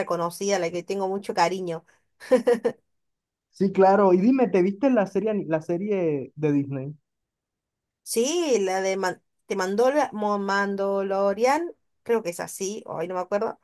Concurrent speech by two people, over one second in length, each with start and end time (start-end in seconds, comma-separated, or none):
none